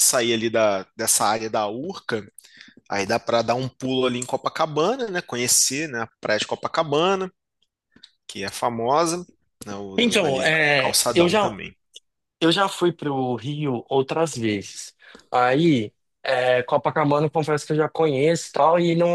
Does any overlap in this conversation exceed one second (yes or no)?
yes